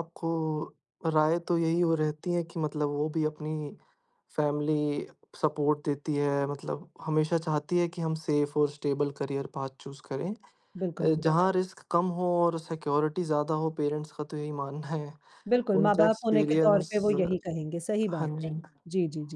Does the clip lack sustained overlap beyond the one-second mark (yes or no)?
no